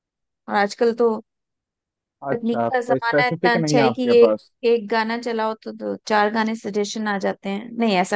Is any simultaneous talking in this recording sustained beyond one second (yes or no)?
yes